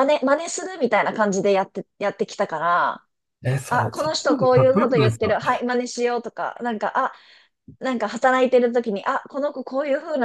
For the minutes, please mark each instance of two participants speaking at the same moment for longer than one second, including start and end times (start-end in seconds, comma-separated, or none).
3.7-5.3